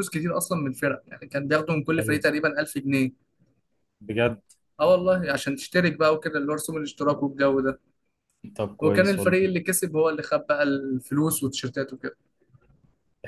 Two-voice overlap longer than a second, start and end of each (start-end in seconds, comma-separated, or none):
none